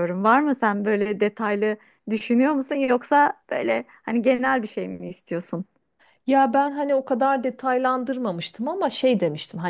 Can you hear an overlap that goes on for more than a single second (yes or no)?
no